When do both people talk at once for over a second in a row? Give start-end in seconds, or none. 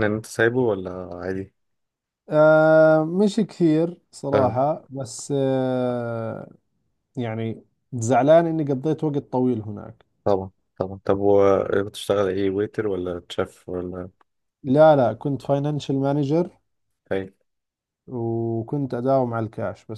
none